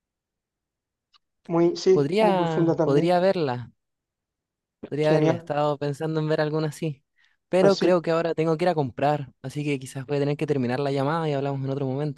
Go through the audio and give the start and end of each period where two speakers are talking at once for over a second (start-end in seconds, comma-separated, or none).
1.9-3.2